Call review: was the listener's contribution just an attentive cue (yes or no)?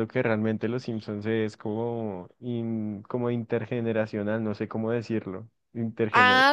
no